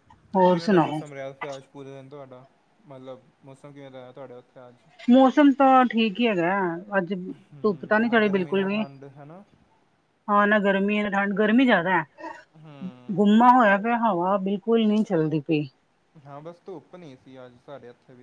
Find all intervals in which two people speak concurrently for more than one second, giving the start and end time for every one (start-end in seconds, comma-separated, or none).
7.5-8.8